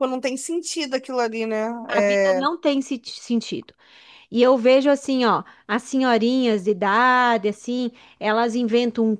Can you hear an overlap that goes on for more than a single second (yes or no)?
no